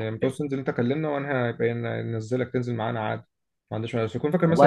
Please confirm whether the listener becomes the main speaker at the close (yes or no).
no